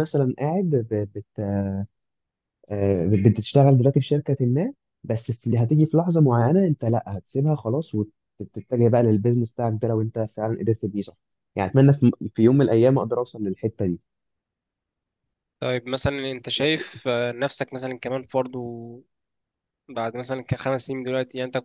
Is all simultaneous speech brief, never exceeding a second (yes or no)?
yes